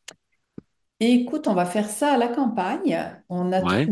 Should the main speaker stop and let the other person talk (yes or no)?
no